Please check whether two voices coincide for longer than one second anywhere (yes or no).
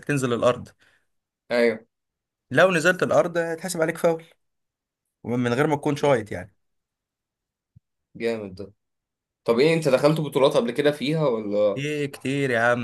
no